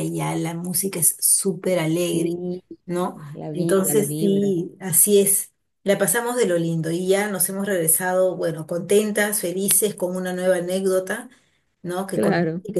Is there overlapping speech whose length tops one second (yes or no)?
yes